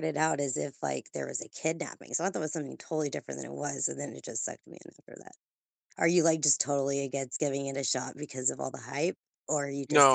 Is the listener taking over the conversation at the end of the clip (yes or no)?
yes